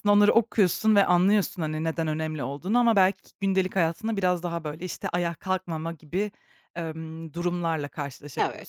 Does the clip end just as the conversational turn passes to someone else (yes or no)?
no